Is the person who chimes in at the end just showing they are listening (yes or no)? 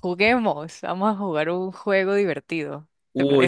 no